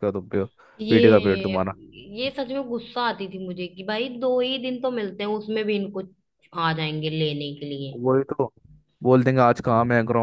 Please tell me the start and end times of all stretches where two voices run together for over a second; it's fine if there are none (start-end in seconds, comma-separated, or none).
none